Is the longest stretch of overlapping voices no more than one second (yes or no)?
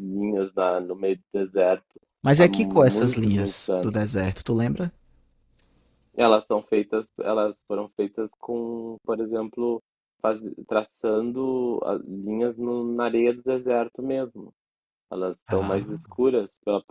no